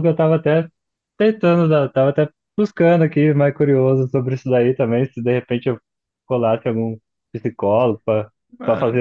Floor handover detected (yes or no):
no